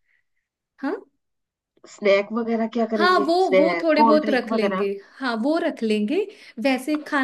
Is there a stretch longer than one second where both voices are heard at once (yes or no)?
yes